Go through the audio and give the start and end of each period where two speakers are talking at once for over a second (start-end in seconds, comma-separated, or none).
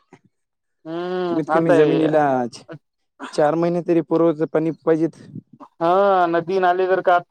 0.9-2.1